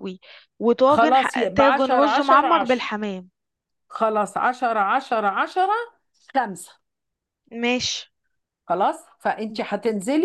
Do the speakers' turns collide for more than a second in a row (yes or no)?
yes